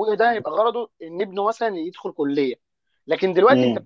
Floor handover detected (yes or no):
no